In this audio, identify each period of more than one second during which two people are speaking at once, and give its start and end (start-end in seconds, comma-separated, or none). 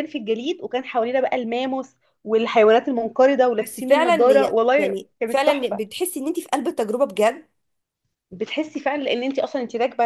3.6-5.8